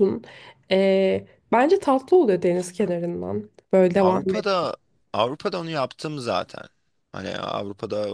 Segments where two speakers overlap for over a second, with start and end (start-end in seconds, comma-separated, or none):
none